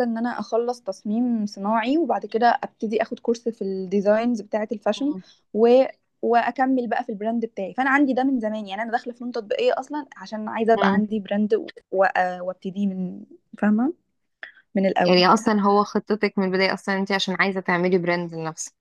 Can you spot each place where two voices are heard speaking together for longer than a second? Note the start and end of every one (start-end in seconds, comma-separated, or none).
none